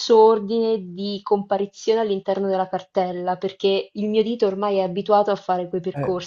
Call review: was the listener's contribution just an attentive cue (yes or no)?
no